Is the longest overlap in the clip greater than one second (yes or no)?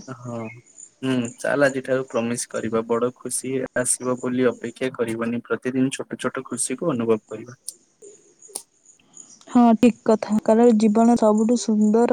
no